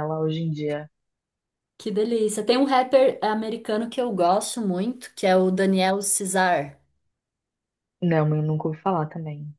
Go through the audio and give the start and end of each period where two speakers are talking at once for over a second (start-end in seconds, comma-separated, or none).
none